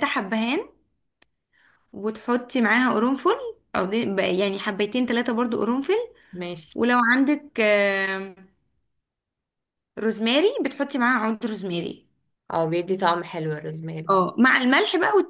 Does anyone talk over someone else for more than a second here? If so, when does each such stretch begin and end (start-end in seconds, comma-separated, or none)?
none